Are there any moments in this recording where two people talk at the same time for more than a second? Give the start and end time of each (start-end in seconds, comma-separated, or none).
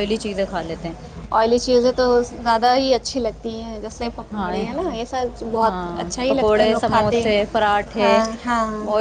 6.0-8.1